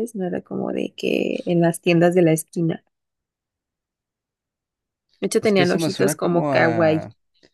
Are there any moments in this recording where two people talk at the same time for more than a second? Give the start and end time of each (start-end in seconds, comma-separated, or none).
5.4-7.0